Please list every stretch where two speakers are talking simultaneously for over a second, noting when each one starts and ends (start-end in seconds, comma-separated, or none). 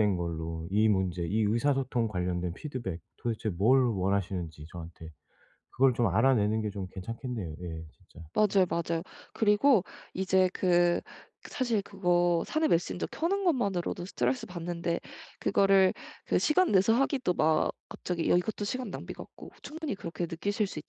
none